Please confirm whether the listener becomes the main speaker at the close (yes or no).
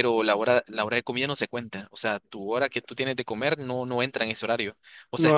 yes